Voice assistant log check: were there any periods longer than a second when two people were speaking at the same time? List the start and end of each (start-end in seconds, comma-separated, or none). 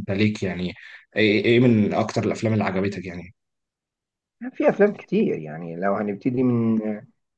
none